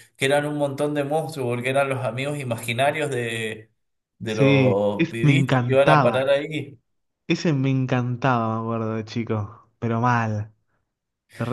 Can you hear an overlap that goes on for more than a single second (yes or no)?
yes